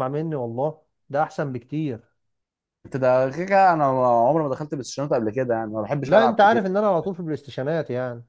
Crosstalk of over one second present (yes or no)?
no